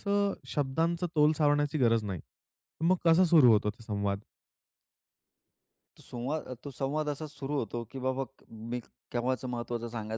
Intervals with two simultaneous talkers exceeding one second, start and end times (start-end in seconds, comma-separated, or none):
none